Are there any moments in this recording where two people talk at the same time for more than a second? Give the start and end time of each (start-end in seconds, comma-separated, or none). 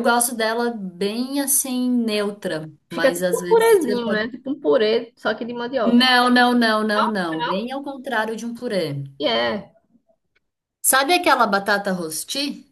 2.9-4.3